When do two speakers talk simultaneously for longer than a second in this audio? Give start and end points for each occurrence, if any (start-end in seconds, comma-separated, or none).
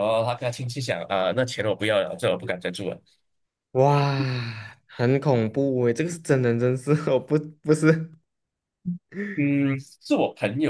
none